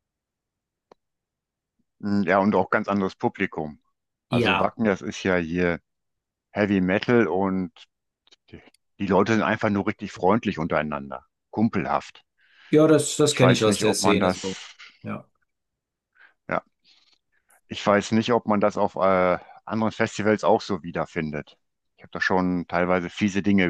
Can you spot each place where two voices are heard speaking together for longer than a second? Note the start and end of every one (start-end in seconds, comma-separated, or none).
13.2-14.6